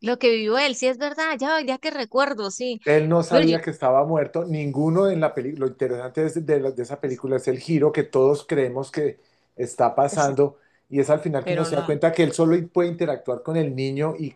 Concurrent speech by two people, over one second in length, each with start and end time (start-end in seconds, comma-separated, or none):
none